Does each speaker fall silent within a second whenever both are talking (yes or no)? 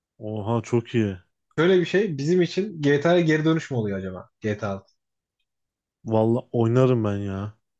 yes